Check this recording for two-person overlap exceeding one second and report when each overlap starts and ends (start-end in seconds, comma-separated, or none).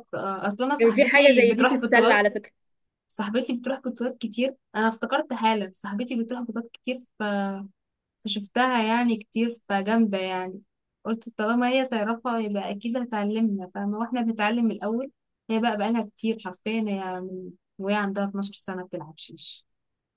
0.8-2.2